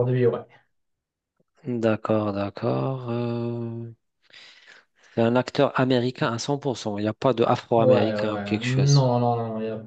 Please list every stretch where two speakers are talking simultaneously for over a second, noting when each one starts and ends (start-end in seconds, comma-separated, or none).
7.8-9.1